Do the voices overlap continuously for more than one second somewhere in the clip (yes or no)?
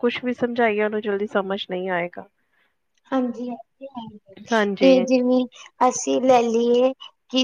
no